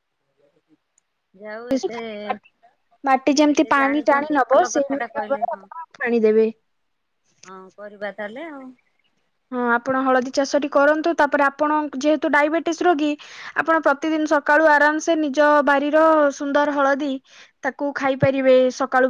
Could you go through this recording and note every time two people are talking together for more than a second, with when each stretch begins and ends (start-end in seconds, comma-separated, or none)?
3.5-5.6